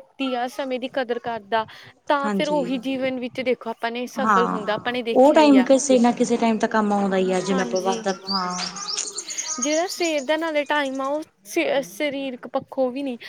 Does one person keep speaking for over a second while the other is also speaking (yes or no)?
no